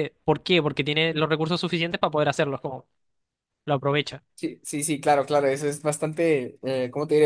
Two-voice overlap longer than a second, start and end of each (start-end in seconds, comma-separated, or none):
none